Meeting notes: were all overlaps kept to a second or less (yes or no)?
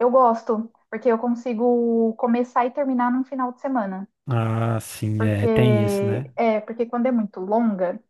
yes